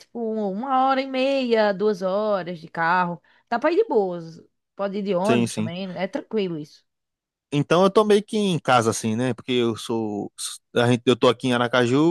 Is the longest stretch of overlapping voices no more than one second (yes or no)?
yes